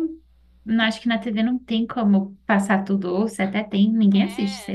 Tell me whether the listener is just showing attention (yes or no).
no